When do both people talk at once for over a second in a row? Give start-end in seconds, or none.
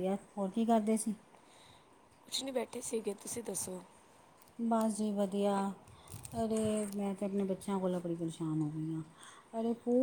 none